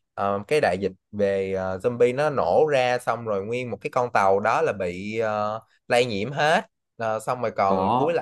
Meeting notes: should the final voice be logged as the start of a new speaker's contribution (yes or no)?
no